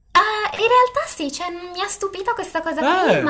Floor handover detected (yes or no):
no